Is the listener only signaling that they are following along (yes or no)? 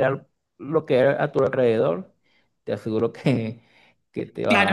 no